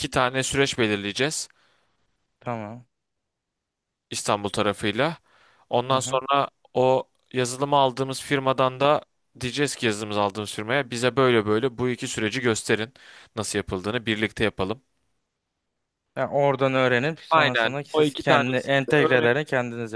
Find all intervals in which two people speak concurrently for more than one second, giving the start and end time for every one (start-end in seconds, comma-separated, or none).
17.3-19.3